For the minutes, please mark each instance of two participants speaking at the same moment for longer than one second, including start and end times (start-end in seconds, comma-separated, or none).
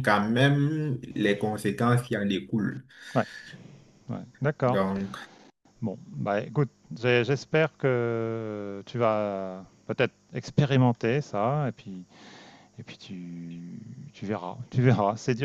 none